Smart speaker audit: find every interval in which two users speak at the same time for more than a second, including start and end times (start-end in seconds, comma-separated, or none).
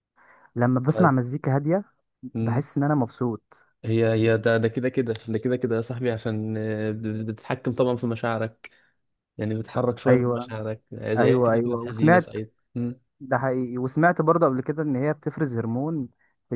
11.2-12.4